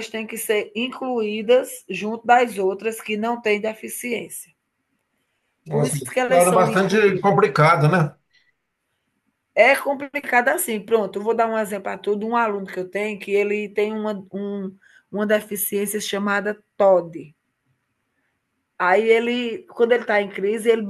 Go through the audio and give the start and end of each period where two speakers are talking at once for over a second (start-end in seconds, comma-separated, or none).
5.7-7.4